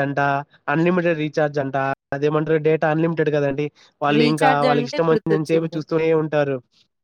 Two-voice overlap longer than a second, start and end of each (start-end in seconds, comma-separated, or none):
4.2-5.8